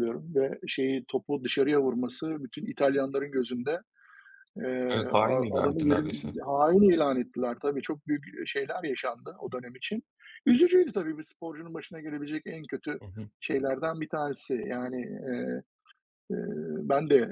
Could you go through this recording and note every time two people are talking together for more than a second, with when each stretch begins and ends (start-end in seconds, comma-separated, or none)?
4.9-6.3